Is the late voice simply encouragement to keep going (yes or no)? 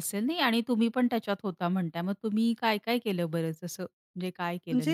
no